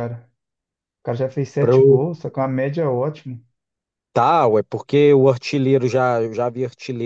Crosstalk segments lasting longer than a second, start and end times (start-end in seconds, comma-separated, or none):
none